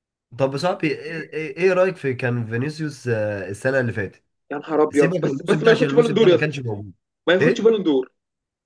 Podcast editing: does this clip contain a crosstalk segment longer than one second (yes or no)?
yes